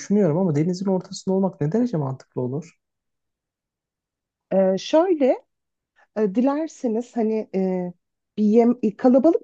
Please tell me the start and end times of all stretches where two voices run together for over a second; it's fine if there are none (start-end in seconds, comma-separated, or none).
none